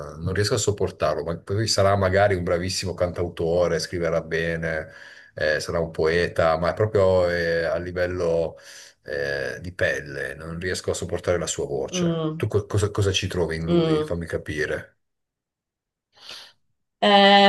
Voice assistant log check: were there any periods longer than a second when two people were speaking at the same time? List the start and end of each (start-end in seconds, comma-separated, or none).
none